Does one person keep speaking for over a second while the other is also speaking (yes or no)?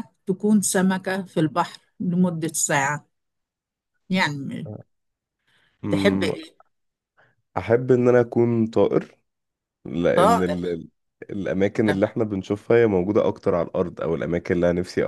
no